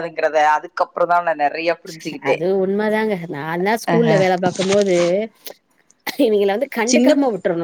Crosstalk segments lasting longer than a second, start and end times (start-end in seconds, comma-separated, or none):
none